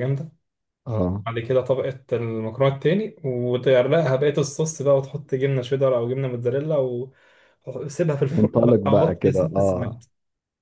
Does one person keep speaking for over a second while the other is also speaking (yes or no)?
yes